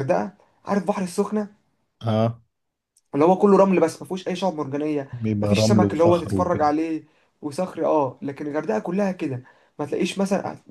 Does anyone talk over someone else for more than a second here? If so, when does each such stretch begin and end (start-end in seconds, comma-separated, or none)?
5.1-6.7